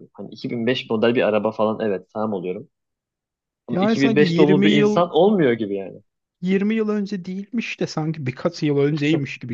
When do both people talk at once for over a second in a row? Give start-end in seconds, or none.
3.7-5.1